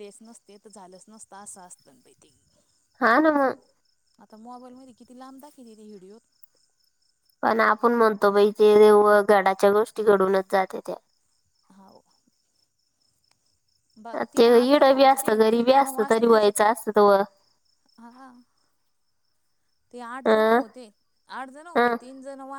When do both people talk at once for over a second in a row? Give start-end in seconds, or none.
14.4-16.7